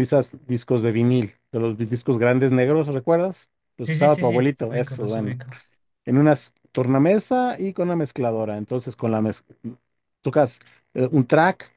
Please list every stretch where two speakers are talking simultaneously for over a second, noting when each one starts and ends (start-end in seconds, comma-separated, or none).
3.8-5.3